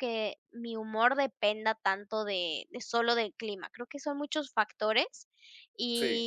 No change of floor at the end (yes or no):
yes